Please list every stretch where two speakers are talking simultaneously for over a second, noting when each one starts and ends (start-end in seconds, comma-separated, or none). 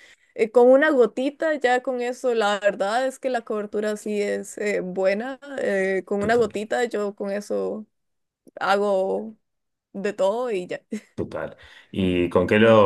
none